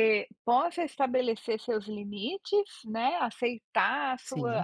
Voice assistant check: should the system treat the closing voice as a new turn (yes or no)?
no